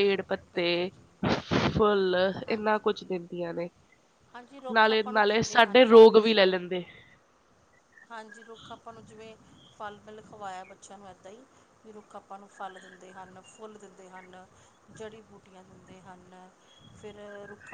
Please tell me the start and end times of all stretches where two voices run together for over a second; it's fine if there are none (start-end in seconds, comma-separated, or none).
4.7-6.3